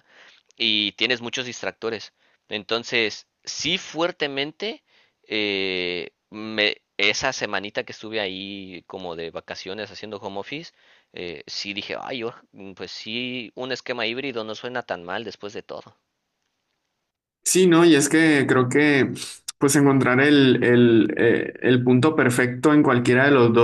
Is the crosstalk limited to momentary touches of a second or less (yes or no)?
yes